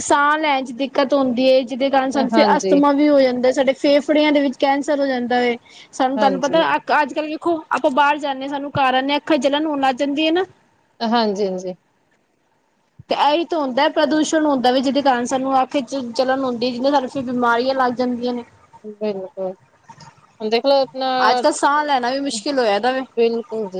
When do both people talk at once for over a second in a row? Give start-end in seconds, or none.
none